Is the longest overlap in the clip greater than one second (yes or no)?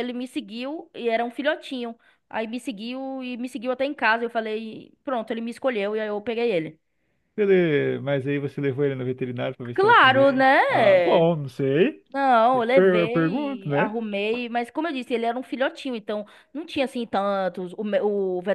yes